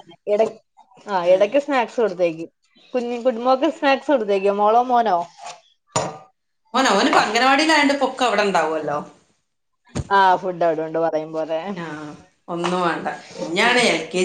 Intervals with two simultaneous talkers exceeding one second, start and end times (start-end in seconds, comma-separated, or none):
none